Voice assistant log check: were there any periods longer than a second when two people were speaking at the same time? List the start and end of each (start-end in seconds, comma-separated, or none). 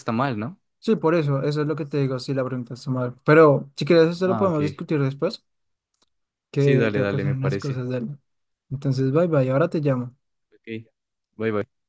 6.6-7.9